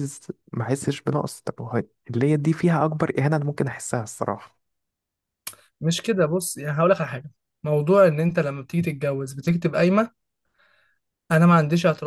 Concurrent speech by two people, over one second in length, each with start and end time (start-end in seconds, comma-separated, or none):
none